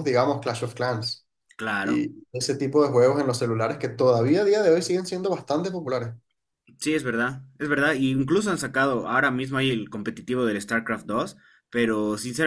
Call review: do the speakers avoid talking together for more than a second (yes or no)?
yes